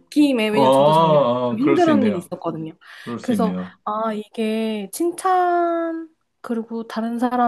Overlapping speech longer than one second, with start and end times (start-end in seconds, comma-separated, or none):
0.5-2.3